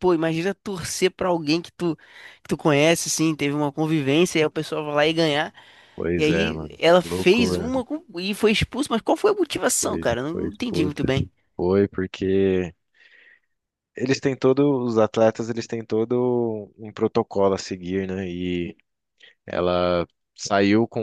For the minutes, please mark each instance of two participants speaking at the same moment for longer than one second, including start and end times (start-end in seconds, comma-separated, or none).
6.2-7.7, 9.8-11.1